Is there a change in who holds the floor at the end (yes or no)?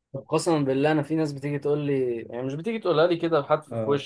no